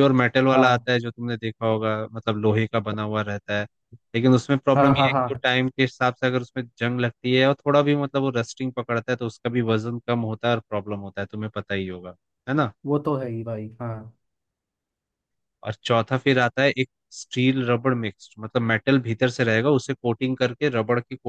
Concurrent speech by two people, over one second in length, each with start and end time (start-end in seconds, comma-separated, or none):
none